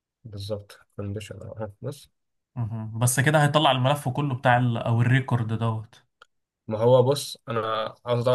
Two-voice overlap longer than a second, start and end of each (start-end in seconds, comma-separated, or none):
none